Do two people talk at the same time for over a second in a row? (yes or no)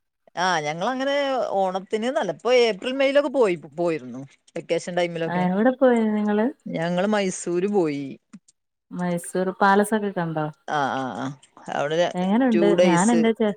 no